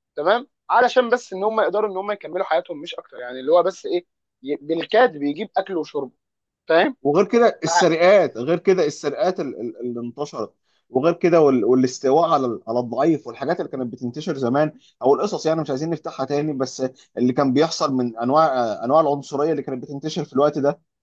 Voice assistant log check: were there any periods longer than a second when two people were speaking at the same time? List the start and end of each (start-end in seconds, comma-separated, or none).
none